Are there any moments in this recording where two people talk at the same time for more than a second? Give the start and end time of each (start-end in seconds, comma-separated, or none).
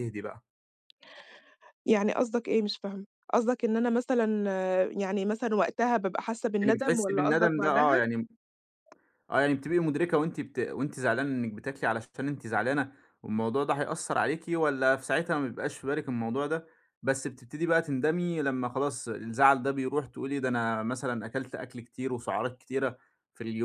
6.6-8.0